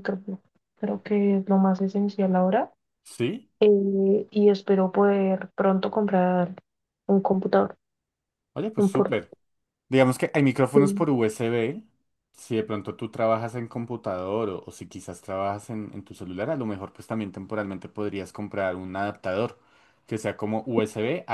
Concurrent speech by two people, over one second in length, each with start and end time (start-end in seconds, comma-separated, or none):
none